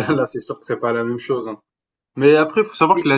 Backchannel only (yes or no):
yes